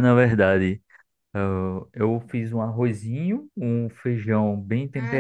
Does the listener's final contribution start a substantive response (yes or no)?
no